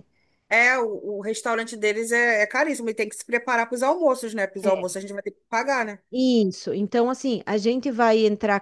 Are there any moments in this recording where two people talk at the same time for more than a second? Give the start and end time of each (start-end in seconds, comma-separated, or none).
none